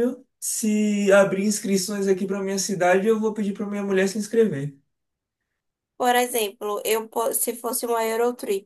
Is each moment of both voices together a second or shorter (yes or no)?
yes